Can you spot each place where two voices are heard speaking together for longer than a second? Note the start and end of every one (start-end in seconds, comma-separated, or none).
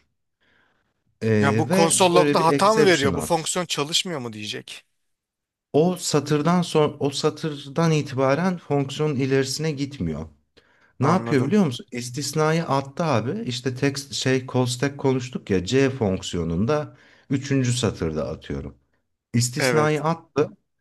1.4-3.5